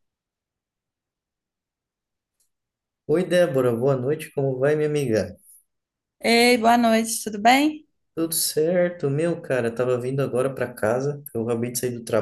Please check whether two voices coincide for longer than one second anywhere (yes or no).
no